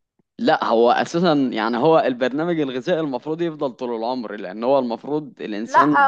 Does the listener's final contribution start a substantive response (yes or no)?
yes